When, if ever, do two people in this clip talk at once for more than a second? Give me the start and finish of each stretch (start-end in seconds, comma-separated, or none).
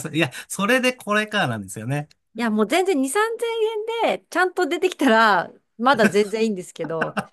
none